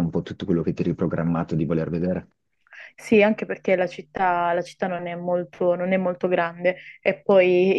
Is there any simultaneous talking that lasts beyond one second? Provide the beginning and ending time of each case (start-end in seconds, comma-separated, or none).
none